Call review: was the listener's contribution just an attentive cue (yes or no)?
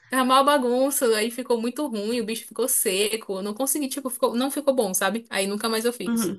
no